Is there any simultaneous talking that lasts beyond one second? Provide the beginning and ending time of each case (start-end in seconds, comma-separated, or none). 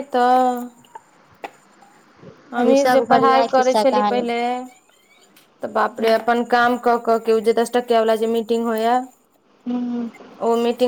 2.6-4.2